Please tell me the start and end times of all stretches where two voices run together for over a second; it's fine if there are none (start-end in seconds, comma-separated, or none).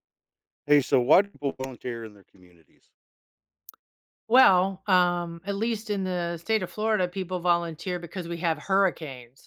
none